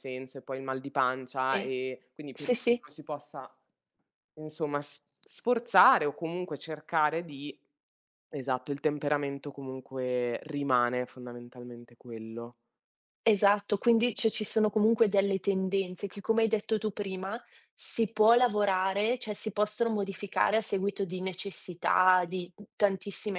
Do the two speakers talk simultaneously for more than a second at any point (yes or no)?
no